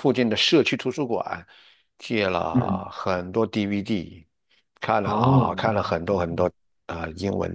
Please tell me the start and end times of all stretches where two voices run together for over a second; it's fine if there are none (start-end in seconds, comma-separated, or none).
5.0-6.5